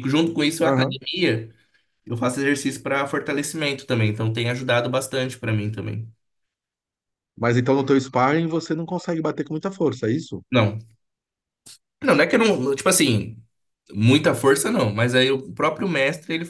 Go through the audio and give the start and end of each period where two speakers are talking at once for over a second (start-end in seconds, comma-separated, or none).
none